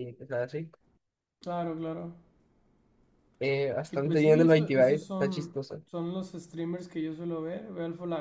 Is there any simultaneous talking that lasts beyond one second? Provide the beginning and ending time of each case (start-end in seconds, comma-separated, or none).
3.9-5.8